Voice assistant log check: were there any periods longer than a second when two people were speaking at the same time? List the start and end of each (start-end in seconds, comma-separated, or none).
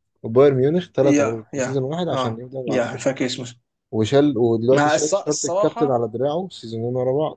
1.0-2.8, 4.7-6.0